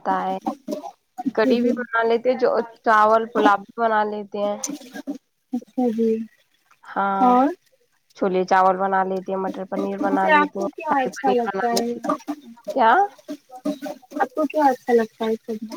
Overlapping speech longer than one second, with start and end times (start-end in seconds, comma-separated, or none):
10.0-11.9